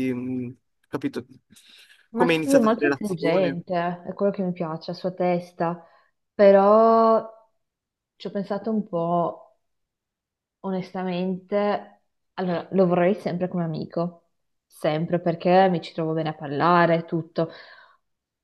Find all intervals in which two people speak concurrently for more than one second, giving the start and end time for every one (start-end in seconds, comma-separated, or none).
2.1-3.6